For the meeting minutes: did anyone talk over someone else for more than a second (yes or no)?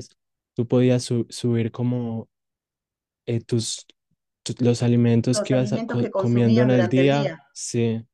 yes